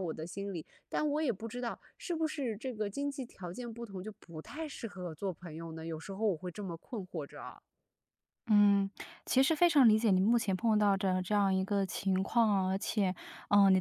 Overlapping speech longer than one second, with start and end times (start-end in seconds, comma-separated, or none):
none